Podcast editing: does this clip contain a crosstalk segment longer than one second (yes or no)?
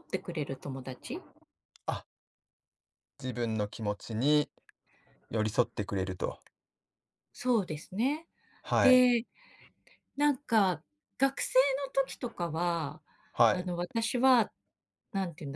no